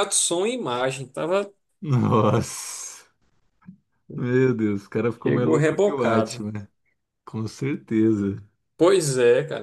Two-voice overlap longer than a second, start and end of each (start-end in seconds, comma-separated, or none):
5.2-6.4